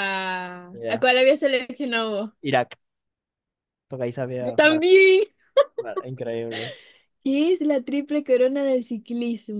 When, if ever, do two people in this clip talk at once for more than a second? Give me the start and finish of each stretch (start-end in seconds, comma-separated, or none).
none